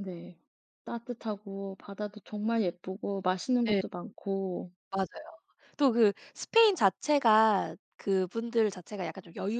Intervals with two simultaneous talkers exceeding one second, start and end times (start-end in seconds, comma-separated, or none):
none